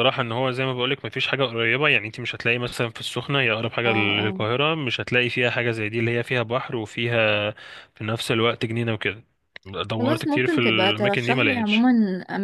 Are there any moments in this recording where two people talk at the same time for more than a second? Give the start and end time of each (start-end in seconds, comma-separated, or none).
10.0-11.9